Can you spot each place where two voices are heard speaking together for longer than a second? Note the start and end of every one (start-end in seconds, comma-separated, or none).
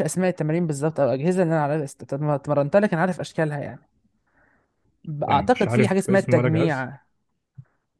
5.3-6.9